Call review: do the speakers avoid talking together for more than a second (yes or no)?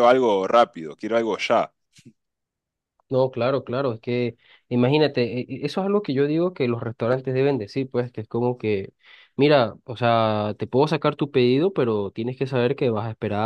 yes